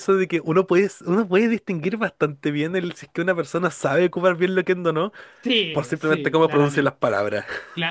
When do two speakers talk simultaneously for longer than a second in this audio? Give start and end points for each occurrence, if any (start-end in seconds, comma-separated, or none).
5.7-7.2